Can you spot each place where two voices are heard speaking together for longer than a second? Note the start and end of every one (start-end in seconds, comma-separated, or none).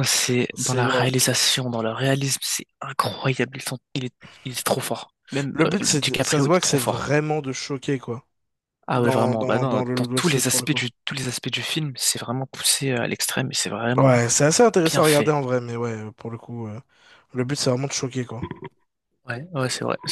5.5-7.0, 8.9-10.8